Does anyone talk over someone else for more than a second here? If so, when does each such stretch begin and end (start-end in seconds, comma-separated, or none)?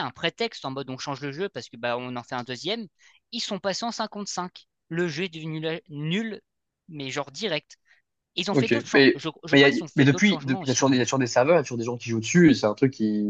8.5-11.1